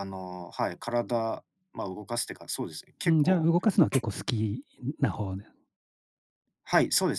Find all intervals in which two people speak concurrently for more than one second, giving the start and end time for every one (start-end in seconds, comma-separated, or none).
none